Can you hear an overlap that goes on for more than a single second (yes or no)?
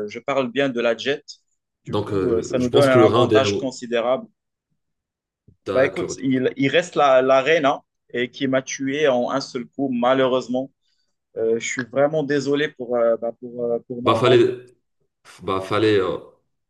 yes